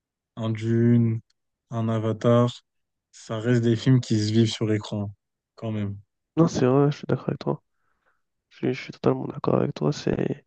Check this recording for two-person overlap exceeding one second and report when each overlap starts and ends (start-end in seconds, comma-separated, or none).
none